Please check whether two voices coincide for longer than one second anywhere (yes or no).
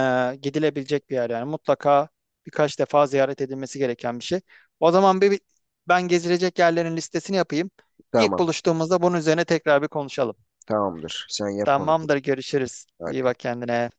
no